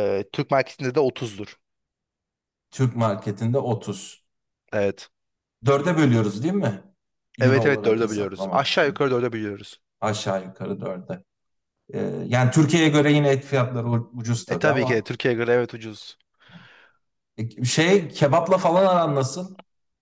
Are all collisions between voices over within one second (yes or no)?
no